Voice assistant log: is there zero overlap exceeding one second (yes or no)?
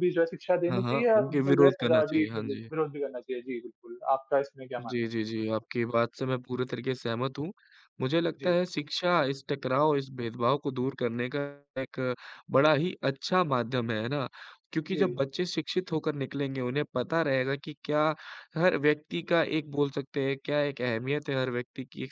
no